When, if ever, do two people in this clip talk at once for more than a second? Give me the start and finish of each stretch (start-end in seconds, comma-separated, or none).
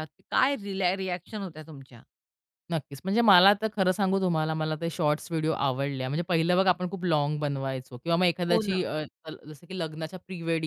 none